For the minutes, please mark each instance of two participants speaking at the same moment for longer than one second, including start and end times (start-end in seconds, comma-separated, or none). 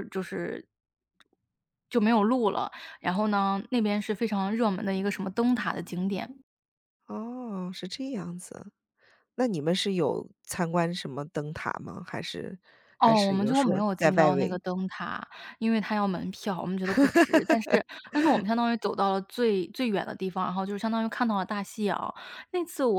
13.0-14.6